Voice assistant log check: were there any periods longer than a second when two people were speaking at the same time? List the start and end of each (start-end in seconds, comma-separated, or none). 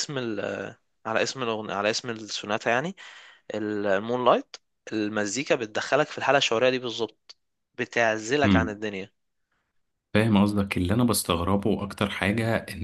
none